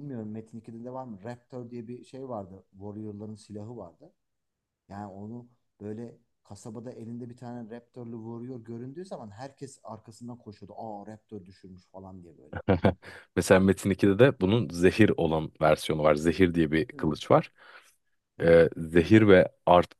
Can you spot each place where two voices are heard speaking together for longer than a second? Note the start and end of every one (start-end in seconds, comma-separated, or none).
none